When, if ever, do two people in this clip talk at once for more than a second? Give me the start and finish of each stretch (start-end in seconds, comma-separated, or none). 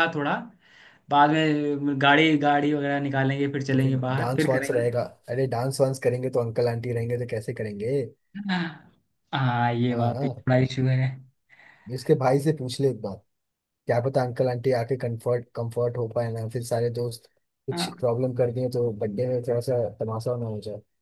3.7-5.0